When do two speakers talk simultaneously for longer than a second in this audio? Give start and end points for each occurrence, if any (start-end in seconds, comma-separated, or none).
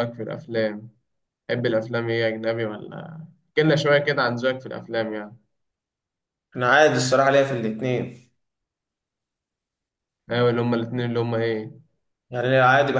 none